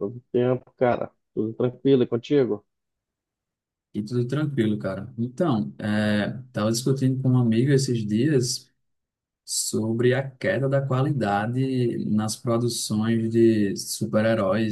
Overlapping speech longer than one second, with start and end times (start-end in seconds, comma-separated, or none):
none